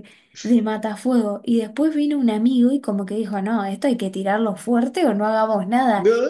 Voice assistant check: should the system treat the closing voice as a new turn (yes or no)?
no